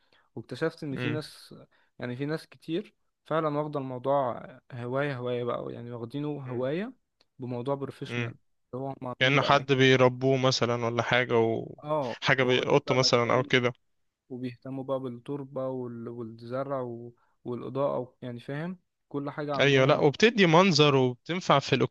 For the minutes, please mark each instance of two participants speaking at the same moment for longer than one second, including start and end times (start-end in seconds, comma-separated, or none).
11.8-13.5